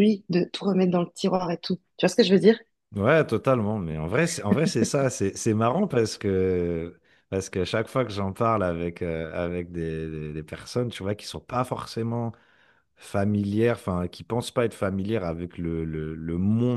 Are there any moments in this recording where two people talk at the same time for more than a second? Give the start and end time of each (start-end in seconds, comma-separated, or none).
none